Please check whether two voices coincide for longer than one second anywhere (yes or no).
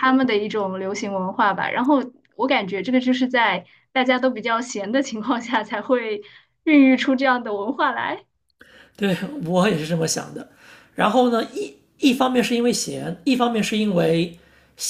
no